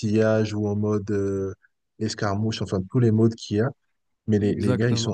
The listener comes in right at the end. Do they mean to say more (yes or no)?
no